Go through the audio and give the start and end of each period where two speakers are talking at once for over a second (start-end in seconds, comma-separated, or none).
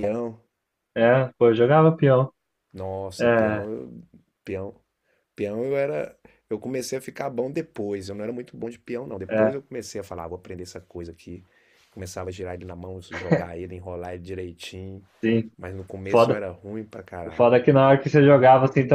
none